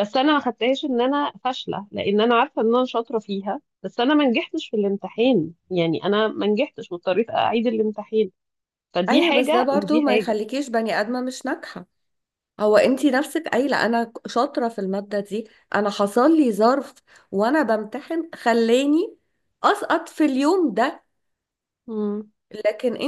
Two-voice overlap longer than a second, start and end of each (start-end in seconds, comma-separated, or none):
9.1-10.4